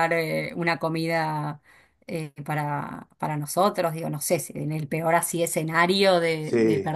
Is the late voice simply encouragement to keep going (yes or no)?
yes